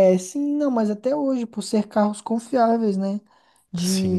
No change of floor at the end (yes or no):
yes